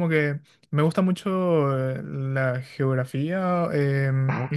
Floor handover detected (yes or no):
no